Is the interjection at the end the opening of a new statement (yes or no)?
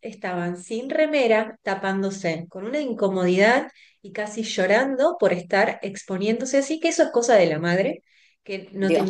no